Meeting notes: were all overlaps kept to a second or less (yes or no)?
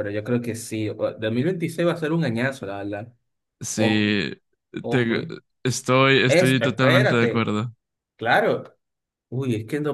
no